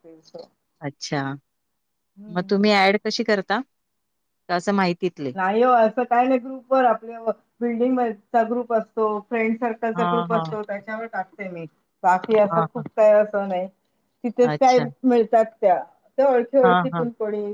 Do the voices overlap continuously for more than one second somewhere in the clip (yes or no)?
no